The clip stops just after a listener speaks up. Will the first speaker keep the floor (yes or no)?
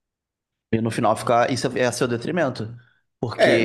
no